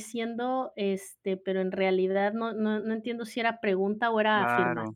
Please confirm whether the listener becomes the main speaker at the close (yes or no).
yes